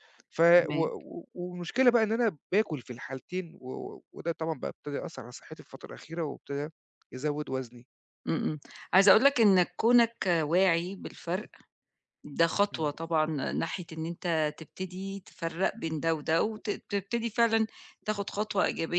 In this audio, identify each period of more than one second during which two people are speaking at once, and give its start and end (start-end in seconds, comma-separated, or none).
none